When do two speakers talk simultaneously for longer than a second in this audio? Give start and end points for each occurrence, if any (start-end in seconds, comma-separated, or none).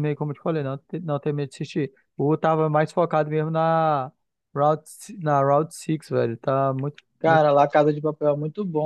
none